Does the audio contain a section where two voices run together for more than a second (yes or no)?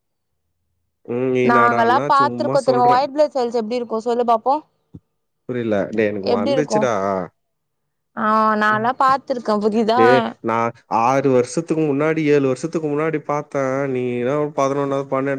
yes